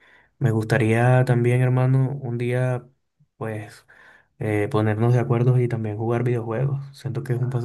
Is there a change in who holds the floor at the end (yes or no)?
yes